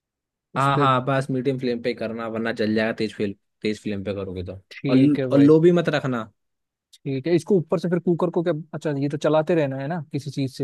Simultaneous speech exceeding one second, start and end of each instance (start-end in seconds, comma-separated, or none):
none